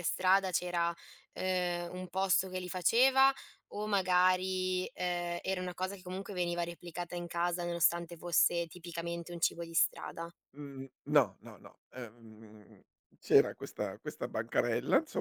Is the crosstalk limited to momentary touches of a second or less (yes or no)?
yes